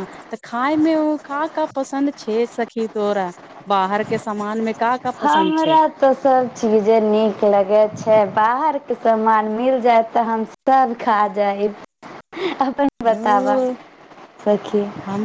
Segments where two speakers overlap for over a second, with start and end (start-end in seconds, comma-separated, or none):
none